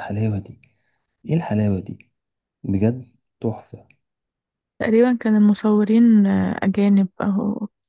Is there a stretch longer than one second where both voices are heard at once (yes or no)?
no